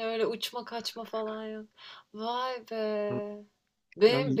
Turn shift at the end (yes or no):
no